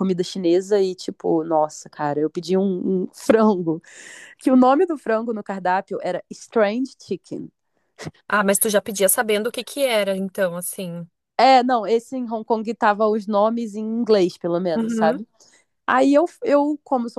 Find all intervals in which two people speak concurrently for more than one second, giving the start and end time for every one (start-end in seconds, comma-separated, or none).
none